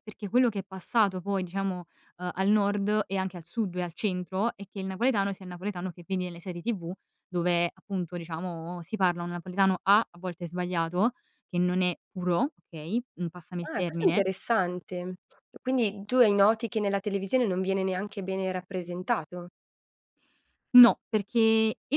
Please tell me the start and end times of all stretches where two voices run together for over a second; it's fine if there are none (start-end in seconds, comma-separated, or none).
none